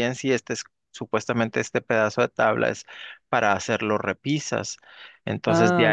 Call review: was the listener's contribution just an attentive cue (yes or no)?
yes